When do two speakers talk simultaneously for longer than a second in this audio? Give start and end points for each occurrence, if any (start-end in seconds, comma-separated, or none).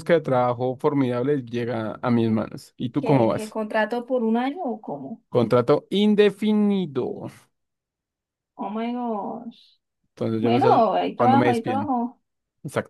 10.4-11.9